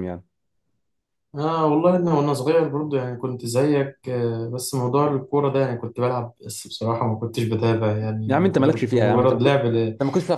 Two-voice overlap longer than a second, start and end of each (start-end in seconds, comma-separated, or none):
8.3-9.5